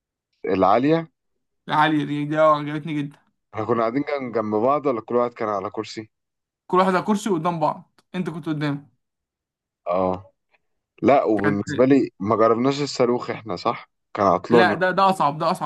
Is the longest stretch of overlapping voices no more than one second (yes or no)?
yes